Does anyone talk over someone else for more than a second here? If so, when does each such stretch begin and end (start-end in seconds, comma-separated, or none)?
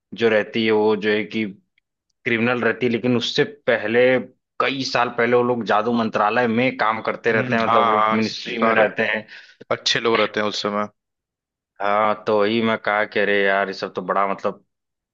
7.3-8.8